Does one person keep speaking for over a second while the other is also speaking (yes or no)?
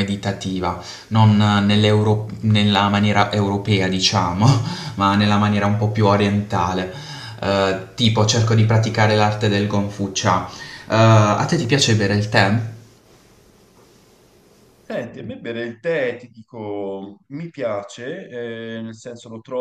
no